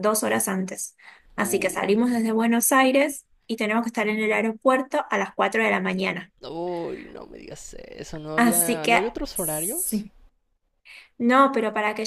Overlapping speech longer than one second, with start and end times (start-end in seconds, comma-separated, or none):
8.3-10.1